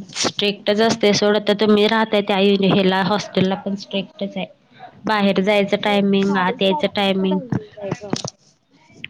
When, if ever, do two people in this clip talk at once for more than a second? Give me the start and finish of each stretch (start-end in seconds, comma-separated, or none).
5.8-7.3